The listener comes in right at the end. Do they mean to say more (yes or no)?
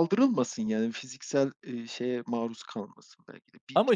no